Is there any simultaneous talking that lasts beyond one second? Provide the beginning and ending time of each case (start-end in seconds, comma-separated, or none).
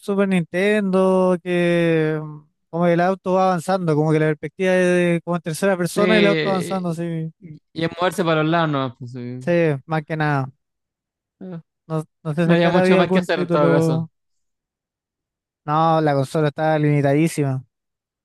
5.8-7.3, 12.4-14.1